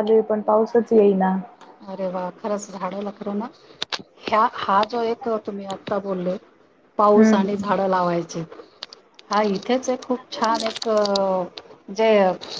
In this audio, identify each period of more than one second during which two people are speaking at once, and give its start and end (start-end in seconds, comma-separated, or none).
none